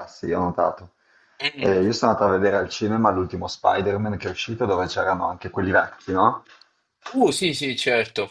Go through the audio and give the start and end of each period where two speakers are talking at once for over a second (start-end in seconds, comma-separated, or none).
none